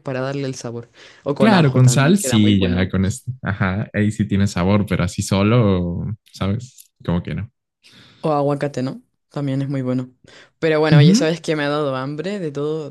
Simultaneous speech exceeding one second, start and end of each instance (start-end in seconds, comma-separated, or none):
1.4-2.9